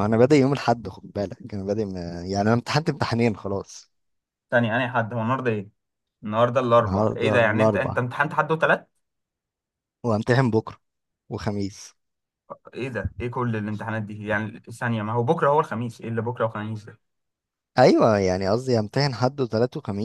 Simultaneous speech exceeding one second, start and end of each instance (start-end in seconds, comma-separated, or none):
6.8-8.0